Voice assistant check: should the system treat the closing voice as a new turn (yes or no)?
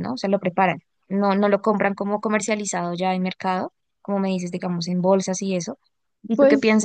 no